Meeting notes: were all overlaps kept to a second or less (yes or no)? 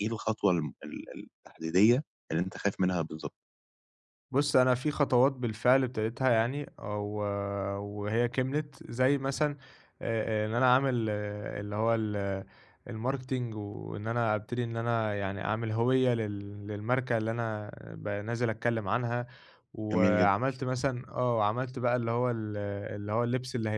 yes